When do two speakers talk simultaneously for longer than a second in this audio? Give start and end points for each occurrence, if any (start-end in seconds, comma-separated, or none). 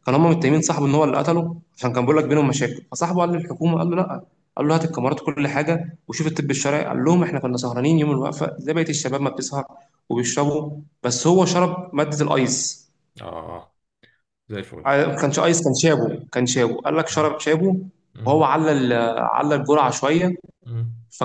none